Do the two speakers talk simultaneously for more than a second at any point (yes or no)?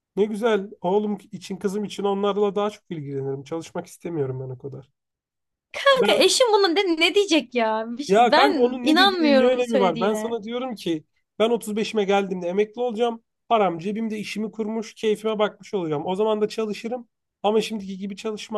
yes